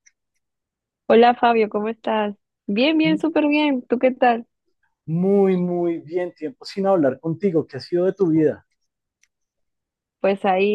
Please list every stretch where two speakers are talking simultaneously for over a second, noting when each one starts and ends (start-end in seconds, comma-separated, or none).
none